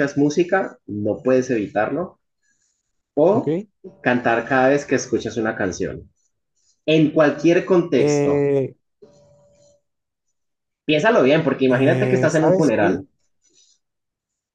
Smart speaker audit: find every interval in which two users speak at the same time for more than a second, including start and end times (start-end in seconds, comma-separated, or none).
11.7-13.0